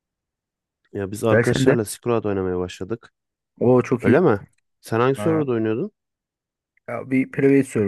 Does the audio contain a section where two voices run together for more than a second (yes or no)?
no